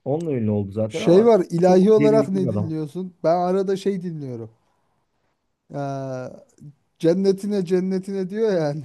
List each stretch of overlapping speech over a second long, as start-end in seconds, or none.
0.9-2.7